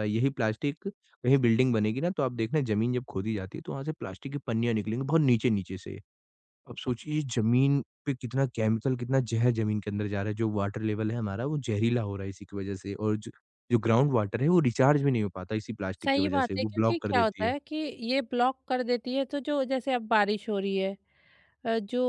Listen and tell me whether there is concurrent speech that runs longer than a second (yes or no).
yes